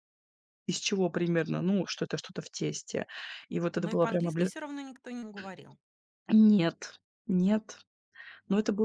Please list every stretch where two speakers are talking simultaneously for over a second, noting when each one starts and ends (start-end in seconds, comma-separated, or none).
none